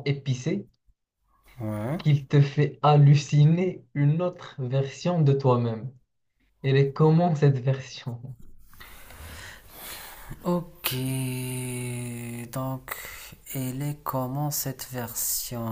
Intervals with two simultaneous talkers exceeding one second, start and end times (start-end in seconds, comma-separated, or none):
none